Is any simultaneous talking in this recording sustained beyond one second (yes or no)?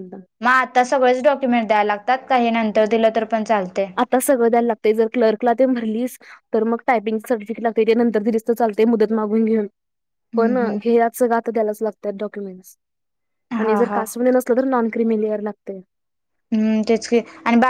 no